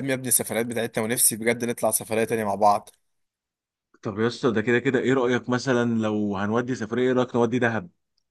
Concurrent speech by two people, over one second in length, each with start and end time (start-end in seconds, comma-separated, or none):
none